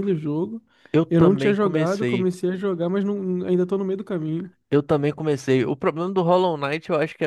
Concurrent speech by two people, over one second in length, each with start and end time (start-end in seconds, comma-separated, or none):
1.1-2.3